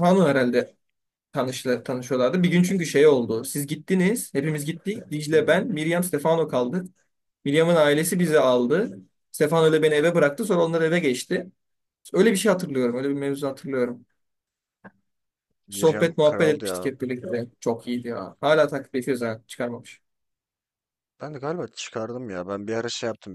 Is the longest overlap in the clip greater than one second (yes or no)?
yes